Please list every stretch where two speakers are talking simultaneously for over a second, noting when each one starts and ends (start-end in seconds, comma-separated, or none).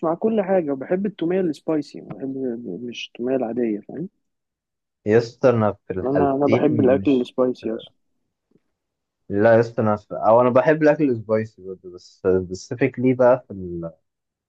6.0-7.3